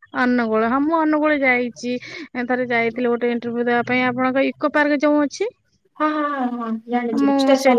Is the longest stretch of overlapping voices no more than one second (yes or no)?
yes